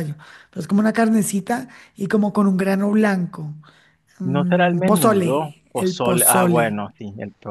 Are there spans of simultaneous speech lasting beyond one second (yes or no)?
yes